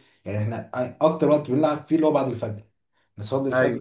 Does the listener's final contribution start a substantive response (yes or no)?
no